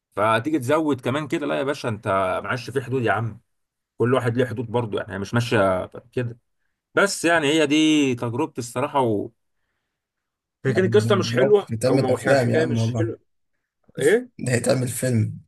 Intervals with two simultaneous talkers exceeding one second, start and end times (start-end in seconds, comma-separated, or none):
11.4-13.1